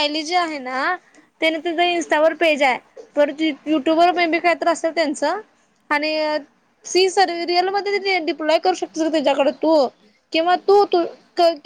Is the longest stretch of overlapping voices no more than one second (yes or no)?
yes